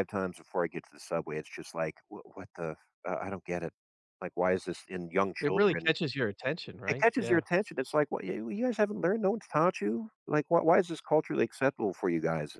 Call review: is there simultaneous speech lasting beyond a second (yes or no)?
no